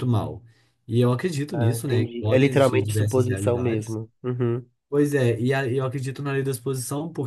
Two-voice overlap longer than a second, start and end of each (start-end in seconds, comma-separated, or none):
1.5-4.0